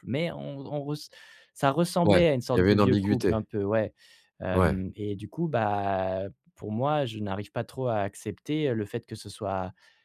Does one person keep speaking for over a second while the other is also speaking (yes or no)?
yes